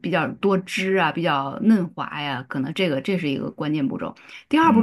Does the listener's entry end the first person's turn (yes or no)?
no